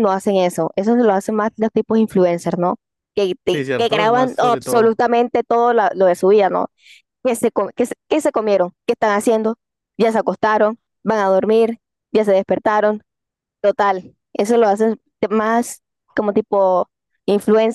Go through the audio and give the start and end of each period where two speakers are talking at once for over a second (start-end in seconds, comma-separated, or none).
3.5-5.0